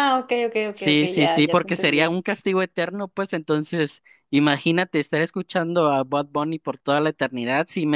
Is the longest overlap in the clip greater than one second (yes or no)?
yes